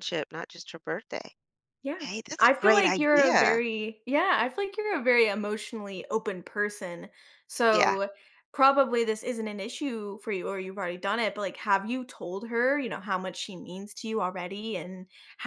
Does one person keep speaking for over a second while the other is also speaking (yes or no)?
yes